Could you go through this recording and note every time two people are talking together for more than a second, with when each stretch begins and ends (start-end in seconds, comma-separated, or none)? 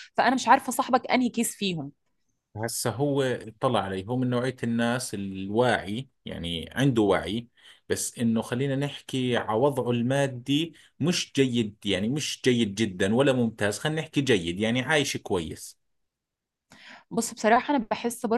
none